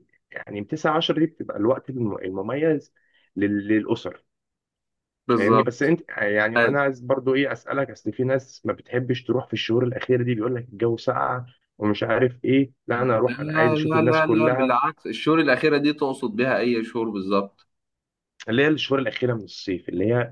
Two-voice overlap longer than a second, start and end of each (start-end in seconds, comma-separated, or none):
13.5-14.8